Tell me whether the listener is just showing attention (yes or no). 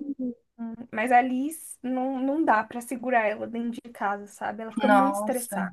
no